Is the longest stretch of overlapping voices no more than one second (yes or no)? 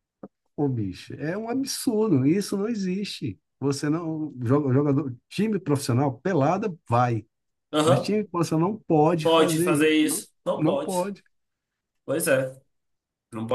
no